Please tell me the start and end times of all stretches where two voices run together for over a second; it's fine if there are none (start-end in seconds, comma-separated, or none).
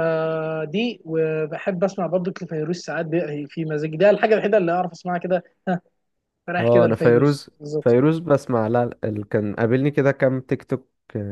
6.6-8.0